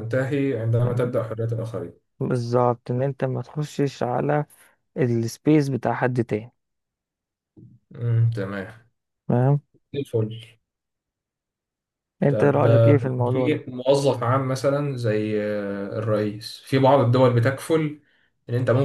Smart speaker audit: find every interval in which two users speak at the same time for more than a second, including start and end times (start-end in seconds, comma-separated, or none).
12.3-13.6